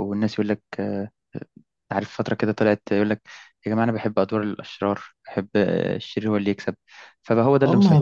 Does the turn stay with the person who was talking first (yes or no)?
no